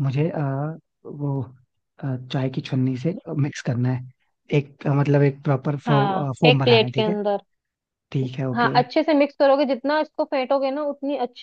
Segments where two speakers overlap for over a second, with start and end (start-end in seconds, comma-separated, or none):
5.9-7.1